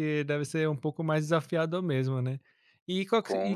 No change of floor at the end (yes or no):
yes